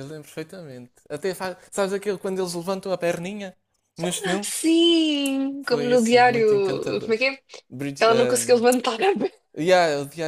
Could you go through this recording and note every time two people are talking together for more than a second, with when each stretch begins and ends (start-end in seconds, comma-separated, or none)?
5.6-7.2